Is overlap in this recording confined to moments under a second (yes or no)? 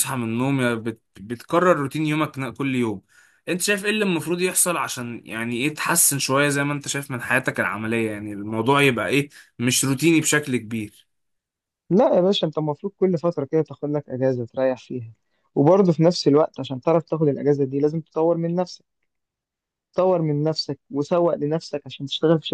yes